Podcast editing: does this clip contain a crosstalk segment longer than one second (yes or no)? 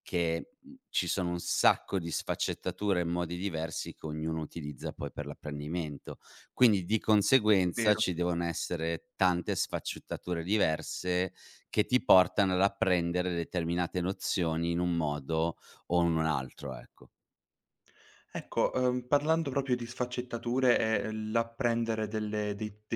no